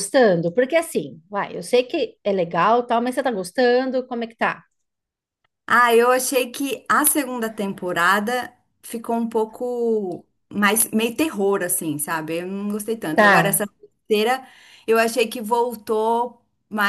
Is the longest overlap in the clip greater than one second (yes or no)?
no